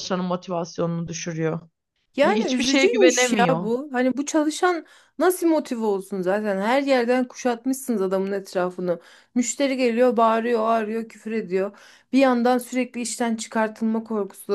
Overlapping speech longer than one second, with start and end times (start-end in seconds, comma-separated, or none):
2.2-3.7